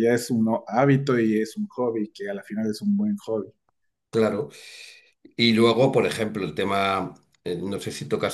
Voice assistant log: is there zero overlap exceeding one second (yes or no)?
yes